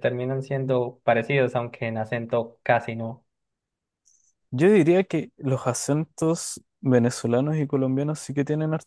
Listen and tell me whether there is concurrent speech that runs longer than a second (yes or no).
no